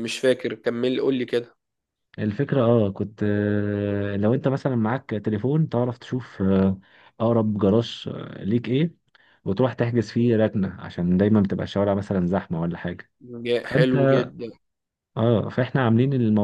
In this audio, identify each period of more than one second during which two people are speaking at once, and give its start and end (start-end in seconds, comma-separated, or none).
none